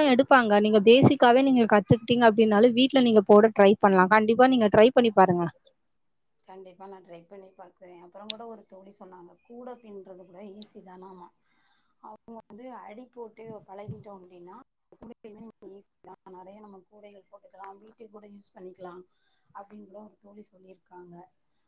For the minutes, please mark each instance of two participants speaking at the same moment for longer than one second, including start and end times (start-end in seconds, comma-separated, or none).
none